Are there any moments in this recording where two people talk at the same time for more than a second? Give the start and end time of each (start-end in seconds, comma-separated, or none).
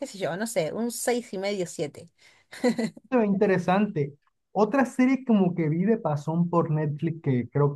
none